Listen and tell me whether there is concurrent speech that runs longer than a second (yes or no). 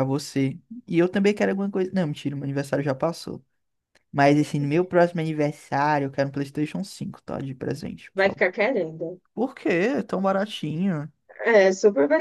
no